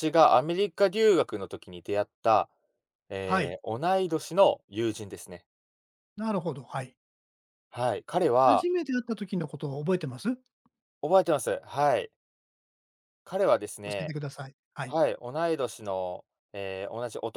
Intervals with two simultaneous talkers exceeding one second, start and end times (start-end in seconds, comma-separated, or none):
none